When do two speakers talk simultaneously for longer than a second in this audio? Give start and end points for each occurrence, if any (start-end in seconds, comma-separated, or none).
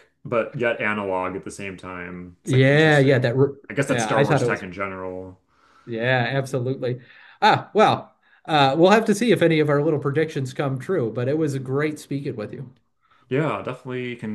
2.4-4.6